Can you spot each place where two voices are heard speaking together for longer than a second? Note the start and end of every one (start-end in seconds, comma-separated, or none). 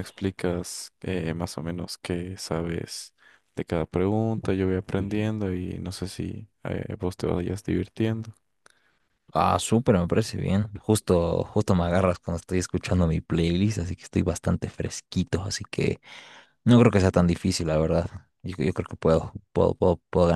none